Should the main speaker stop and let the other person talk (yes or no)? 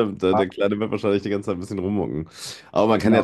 no